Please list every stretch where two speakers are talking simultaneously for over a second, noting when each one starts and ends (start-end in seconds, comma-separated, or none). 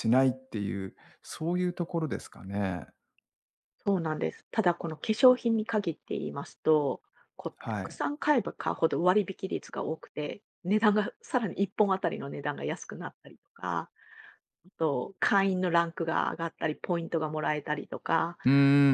none